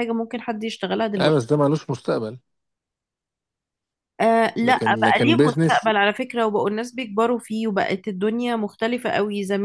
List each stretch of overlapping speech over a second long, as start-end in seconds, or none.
4.6-5.9